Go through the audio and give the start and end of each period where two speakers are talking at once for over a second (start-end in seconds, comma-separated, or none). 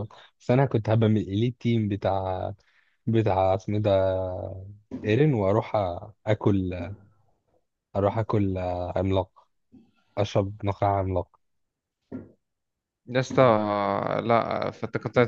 none